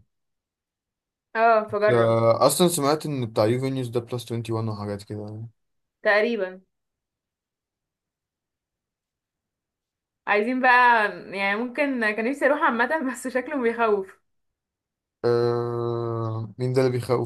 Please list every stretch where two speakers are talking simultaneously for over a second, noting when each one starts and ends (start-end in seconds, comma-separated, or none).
none